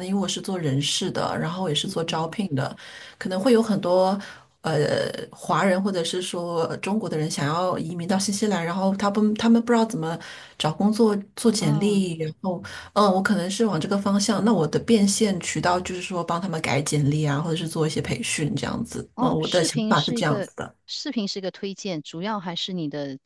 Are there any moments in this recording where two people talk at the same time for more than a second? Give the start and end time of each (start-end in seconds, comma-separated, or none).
19.1-20.5